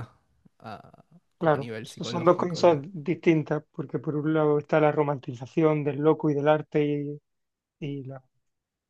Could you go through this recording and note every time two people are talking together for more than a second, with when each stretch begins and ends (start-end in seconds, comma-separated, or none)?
1.4-2.9